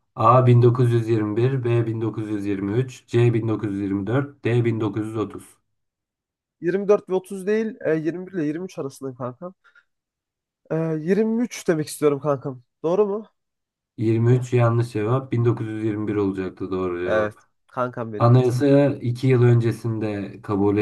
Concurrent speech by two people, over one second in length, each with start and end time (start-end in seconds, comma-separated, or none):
none